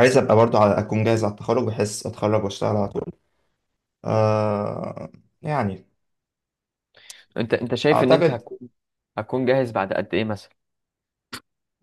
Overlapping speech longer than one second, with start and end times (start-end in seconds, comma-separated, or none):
none